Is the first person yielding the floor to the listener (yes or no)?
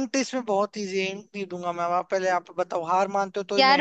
yes